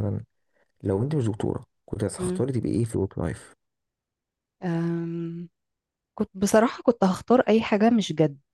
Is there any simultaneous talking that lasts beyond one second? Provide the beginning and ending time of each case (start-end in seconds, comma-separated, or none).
none